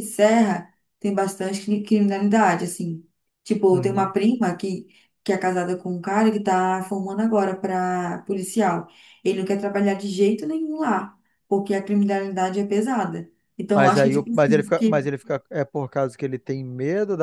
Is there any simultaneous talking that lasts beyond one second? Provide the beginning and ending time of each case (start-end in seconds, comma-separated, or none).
13.7-15.1